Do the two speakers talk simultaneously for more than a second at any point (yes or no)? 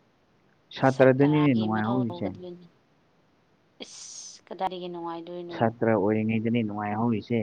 yes